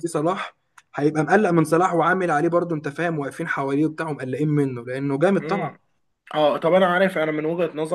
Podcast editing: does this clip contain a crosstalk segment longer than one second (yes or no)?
no